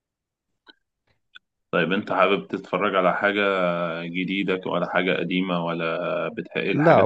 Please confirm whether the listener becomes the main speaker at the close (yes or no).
yes